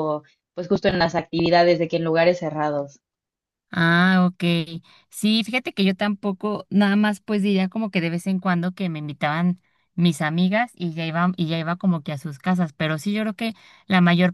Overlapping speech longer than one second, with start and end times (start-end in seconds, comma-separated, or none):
none